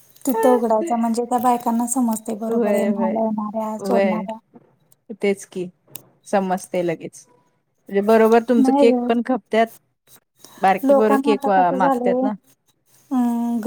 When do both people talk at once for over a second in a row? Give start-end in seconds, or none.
10.9-12.3